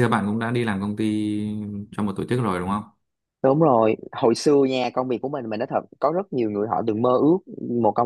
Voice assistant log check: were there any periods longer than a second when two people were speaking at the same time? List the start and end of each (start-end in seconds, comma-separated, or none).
none